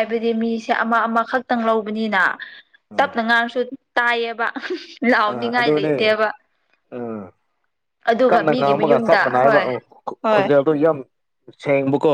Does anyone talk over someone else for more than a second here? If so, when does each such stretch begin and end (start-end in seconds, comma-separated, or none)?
8.3-9.6